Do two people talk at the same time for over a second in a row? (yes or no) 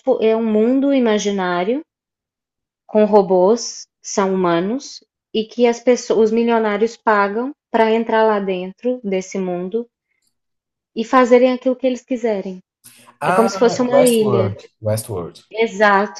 yes